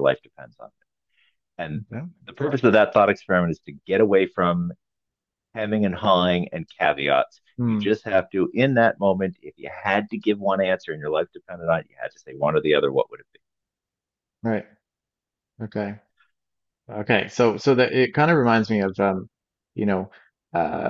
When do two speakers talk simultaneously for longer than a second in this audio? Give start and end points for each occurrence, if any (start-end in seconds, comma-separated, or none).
none